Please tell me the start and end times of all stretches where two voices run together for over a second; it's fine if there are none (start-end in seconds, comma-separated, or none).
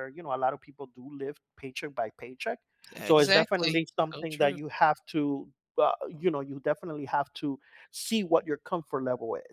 3.0-4.6